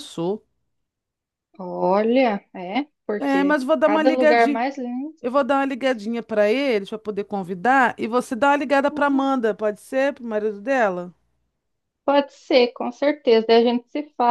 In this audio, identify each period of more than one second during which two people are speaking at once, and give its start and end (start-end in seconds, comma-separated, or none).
3.2-4.6